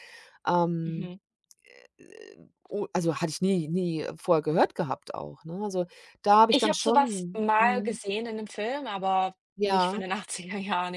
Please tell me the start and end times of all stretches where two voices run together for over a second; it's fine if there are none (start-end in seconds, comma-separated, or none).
6.5-8.0